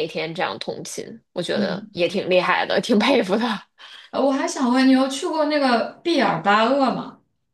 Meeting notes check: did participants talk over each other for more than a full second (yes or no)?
no